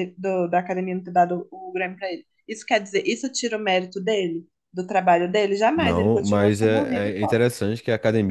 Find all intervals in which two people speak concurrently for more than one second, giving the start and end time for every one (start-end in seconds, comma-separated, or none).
5.8-7.4